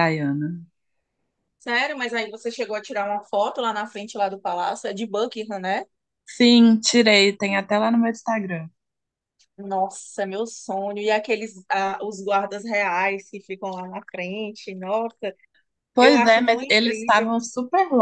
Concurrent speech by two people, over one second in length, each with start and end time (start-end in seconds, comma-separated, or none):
16.0-17.4